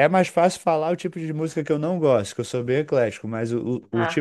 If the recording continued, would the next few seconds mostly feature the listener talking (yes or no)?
no